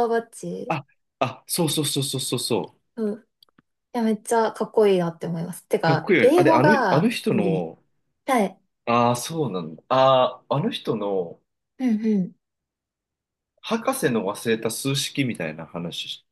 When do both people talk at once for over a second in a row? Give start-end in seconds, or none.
5.8-7.7